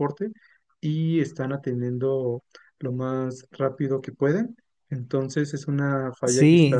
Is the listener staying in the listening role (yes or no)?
no